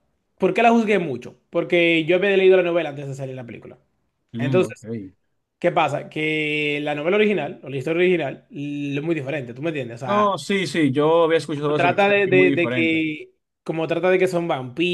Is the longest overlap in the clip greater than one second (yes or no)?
yes